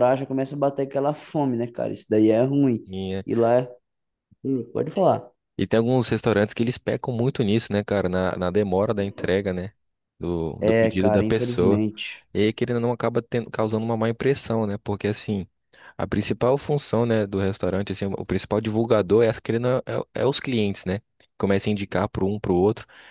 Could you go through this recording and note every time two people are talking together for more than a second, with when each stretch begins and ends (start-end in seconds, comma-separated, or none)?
10.6-11.8